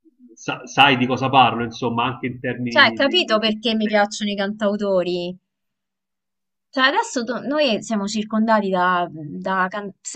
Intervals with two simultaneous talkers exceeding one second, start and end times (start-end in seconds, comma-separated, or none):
2.7-4.0